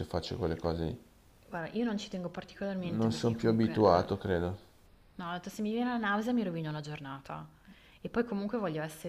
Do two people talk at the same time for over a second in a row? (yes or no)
yes